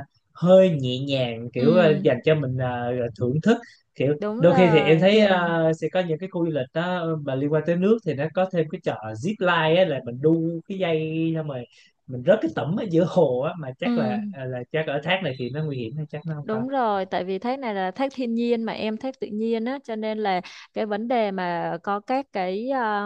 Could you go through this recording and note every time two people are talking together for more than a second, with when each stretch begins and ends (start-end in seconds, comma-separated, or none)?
4.2-5.5